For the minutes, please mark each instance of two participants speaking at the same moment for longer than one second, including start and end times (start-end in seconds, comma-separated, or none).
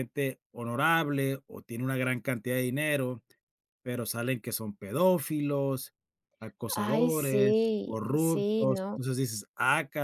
6.8-9.0